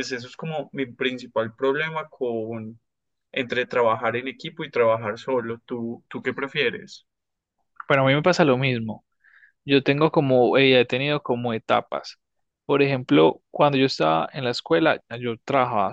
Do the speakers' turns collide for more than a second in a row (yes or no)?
no